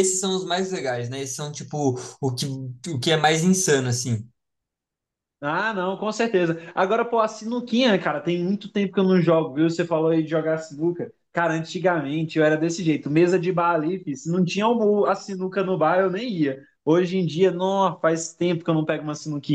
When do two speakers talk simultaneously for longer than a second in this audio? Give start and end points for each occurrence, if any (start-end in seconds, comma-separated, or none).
none